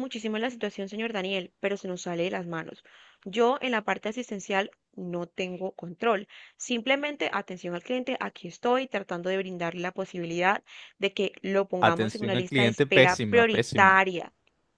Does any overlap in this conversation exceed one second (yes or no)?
yes